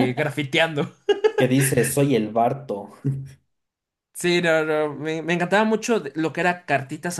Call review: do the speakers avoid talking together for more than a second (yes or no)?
yes